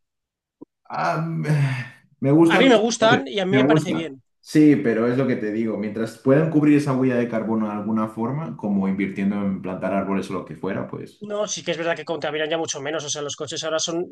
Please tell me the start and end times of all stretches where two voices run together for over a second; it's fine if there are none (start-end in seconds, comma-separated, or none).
2.5-4.2